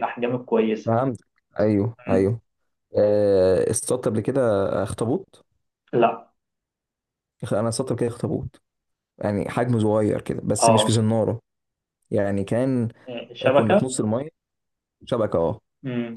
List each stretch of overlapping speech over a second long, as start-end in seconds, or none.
none